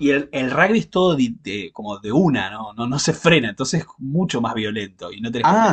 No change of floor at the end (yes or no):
no